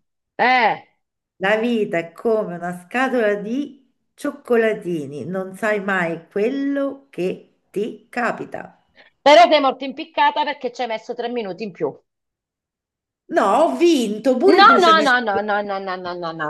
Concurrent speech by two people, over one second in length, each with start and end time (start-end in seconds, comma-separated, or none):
none